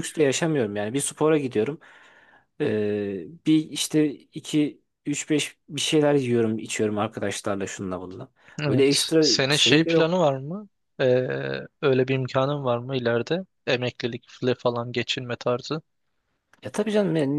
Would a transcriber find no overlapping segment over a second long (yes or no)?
no